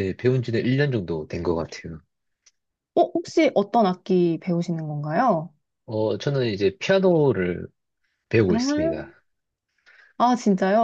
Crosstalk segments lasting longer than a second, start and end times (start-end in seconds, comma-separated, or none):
none